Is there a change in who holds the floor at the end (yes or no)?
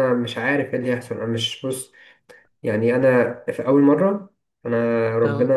no